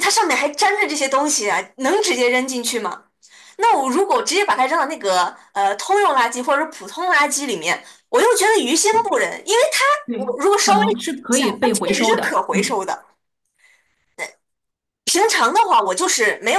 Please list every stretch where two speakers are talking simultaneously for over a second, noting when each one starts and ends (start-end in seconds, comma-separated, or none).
10.1-12.8